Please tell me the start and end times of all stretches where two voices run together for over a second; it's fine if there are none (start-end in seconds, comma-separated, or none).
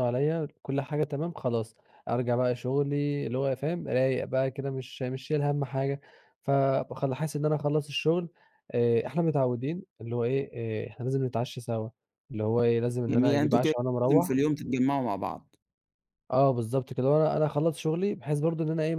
13.1-14.4